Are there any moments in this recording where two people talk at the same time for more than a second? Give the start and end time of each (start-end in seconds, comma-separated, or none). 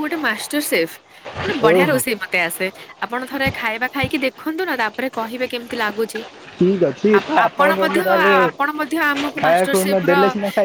8.5-10.1